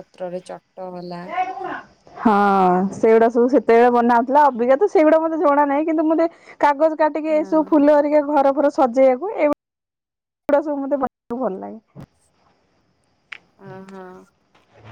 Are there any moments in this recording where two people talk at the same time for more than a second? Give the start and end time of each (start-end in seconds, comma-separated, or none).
none